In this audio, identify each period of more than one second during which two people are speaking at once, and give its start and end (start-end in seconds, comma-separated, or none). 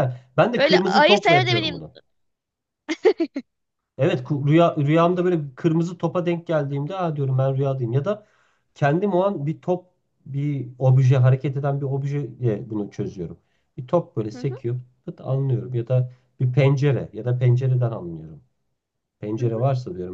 0.6-1.9